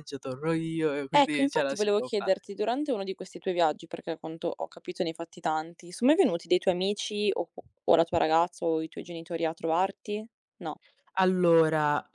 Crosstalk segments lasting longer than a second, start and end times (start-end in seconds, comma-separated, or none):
1.1-2.6